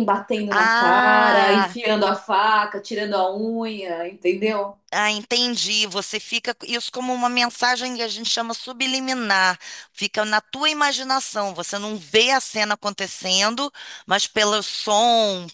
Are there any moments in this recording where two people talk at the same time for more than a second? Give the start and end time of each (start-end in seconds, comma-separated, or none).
0.5-1.8